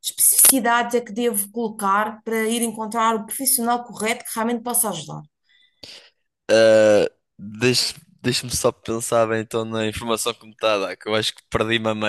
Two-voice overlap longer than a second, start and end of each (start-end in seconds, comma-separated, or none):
none